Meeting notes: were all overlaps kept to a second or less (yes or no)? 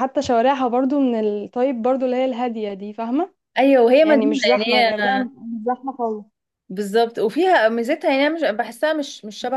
no